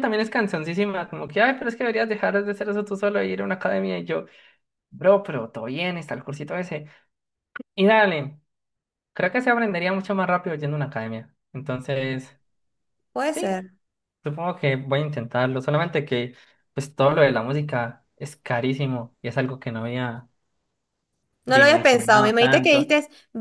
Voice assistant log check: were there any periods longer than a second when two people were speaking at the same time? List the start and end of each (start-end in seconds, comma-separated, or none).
21.5-22.9